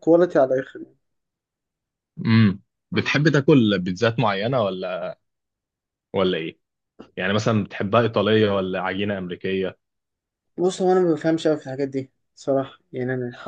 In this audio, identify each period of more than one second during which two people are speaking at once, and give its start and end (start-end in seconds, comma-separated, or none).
none